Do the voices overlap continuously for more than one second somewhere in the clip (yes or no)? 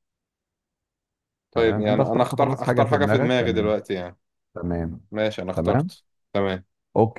yes